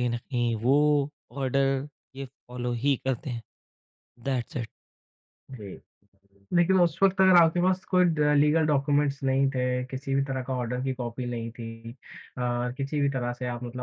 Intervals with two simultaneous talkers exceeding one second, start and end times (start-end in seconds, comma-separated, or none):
none